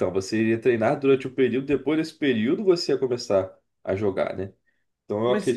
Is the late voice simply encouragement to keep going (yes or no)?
yes